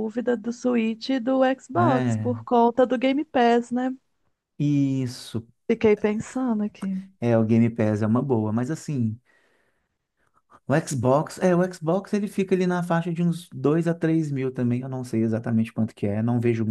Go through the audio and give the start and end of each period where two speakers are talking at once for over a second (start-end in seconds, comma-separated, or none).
none